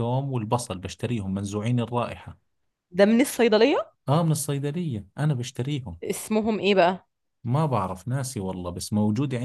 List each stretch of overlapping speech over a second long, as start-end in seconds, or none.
none